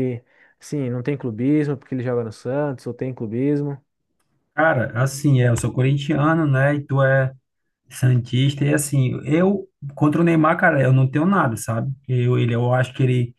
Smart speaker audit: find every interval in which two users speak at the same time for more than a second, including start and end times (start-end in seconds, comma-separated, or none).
none